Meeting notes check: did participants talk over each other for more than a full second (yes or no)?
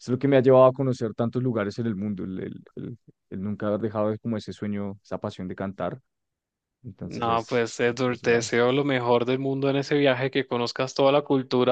yes